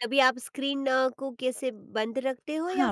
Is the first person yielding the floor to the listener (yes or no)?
yes